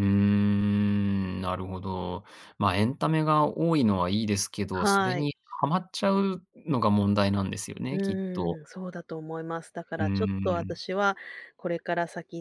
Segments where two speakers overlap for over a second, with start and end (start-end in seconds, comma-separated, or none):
none